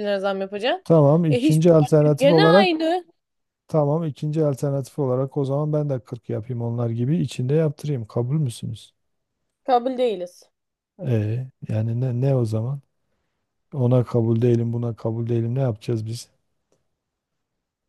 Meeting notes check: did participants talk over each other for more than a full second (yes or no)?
yes